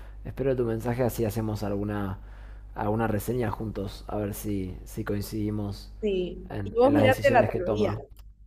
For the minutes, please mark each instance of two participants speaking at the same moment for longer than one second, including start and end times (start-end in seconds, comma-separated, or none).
6.5-7.9